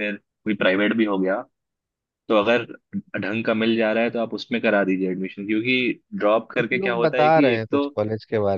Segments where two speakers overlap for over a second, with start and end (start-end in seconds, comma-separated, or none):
6.6-7.9